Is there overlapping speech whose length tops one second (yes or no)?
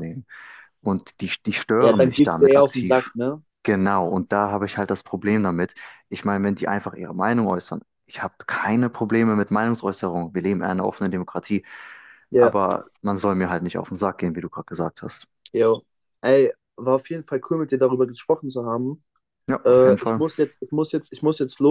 yes